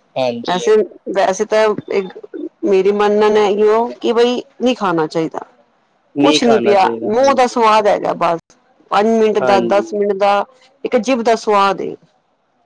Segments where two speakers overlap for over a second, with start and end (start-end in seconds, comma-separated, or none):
6.2-7.6